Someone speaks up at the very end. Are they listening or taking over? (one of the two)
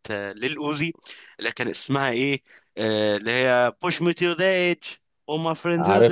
listening